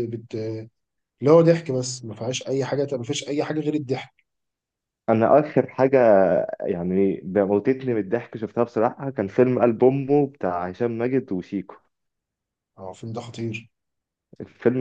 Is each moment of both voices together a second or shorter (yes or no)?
yes